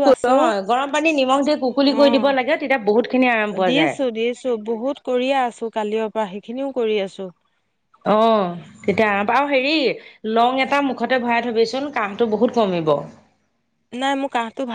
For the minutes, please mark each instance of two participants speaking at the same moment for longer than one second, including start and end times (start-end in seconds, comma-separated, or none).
none